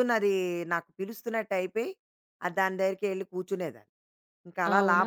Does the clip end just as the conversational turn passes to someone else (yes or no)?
yes